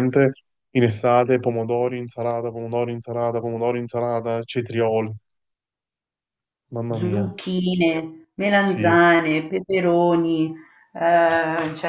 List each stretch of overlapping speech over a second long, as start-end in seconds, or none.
none